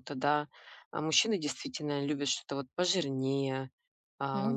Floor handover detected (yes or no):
no